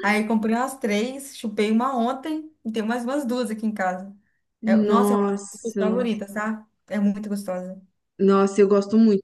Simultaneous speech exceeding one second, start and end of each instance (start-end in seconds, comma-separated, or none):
4.9-6.1